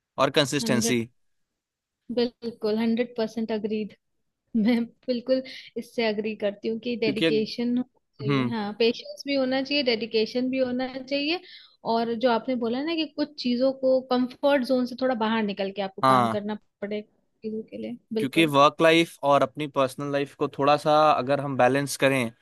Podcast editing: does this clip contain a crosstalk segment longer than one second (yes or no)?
no